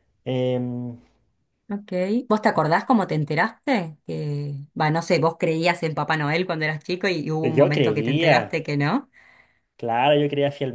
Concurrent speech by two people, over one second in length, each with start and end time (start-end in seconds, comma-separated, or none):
7.4-8.6